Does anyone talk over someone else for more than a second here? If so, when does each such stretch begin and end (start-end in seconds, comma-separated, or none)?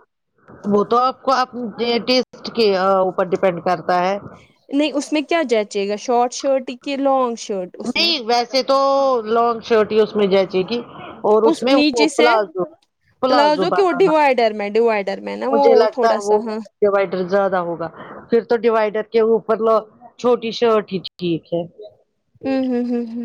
none